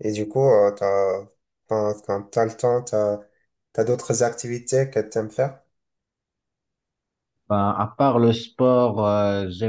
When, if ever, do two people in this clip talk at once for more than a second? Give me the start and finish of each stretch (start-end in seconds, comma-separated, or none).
none